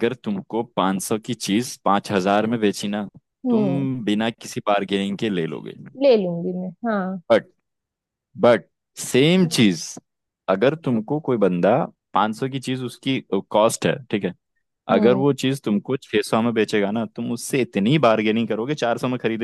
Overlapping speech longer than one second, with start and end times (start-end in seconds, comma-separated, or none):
none